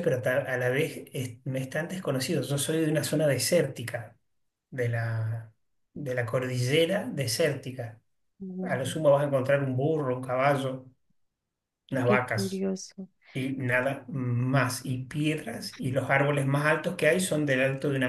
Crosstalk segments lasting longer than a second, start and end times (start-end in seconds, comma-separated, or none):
none